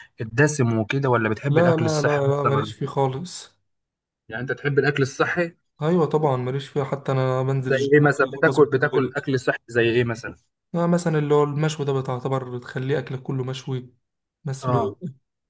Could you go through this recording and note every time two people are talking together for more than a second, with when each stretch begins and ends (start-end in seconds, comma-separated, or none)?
1.5-2.7, 7.7-9.1